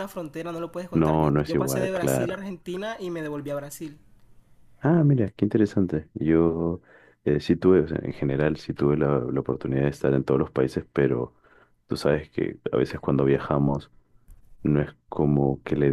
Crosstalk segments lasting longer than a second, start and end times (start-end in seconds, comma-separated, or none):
0.9-2.5